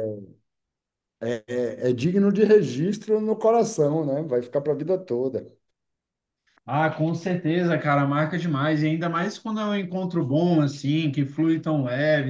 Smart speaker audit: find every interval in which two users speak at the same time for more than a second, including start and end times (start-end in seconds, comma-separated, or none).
none